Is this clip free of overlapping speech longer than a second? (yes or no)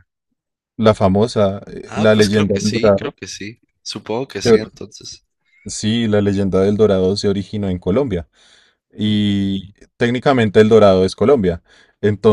no